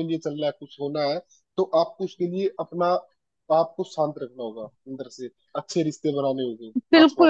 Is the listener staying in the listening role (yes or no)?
no